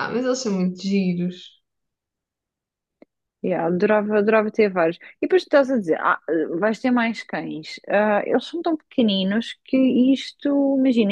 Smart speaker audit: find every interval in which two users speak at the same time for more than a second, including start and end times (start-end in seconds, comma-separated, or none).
none